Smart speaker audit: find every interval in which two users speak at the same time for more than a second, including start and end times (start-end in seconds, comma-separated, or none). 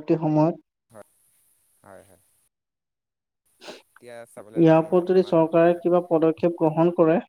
3.9-5.9